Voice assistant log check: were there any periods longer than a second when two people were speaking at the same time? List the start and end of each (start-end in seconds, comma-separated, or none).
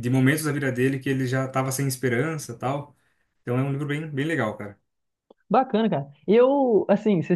none